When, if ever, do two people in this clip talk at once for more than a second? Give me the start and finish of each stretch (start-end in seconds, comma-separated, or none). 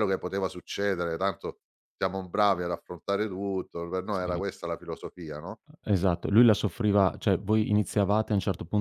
none